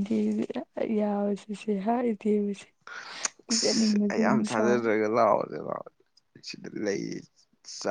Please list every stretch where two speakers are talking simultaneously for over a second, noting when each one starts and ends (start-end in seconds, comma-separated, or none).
3.5-4.8